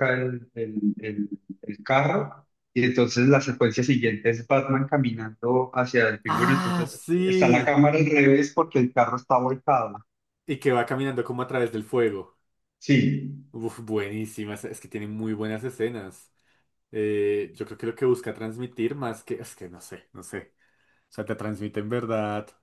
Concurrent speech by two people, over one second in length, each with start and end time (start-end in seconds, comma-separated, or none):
6.3-7.8